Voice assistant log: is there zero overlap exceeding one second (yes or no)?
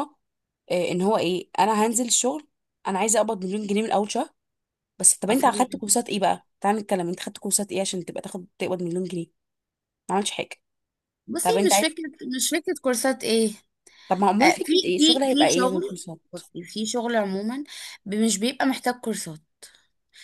no